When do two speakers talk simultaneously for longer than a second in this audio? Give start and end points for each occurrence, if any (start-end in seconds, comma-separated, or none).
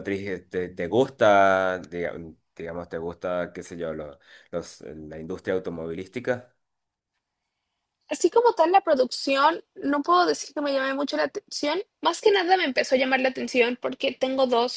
none